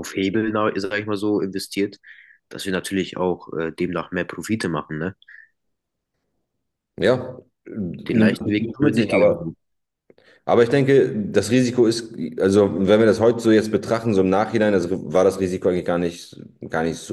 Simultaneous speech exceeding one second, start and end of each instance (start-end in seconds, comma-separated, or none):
8.1-9.5